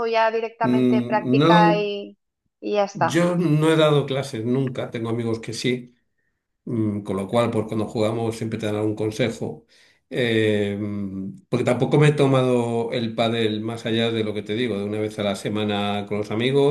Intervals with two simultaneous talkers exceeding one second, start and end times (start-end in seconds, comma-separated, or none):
0.6-1.9